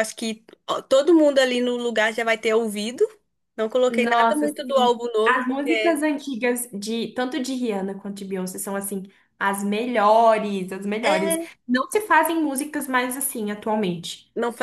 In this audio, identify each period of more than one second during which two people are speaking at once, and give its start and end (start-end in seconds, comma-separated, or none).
3.9-6.0